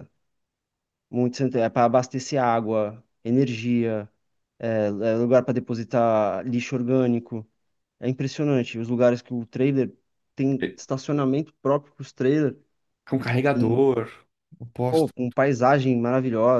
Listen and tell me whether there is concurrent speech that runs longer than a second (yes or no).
no